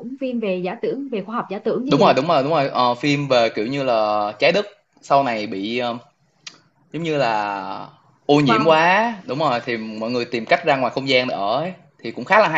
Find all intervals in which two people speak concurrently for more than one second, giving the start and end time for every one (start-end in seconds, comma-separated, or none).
none